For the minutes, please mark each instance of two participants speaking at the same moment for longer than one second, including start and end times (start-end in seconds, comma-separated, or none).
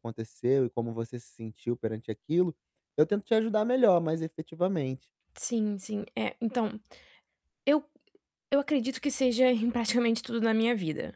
none